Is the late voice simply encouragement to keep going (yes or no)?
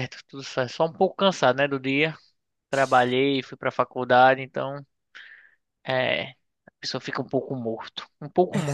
no